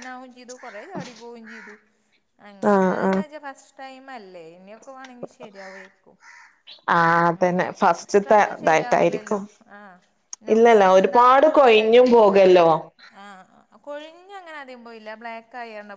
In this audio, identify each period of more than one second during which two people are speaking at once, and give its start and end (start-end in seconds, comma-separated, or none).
8.1-9.4, 10.5-12.2